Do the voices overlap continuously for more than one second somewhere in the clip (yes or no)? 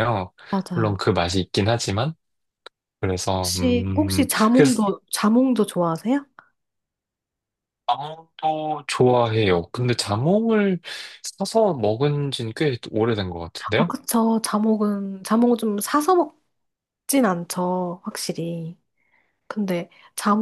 yes